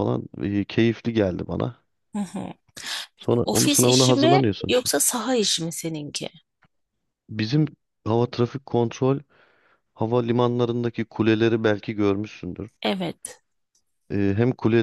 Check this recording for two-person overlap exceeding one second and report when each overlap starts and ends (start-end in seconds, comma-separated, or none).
3.2-4.9